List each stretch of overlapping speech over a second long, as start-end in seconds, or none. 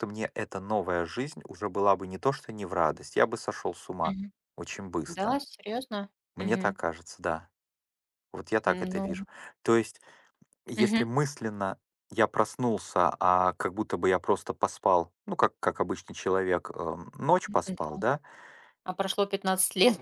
none